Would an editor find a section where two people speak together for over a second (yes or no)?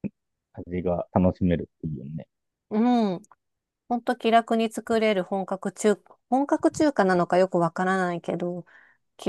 no